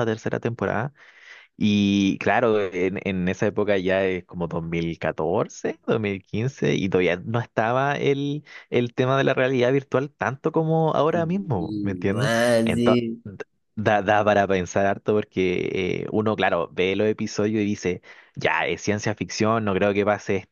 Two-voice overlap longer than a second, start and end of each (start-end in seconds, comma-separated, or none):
11.1-13.0